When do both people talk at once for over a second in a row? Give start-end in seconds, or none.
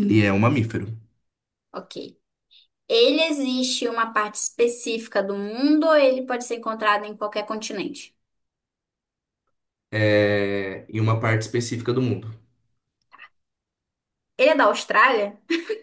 none